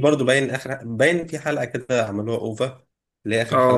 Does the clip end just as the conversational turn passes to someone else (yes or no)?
yes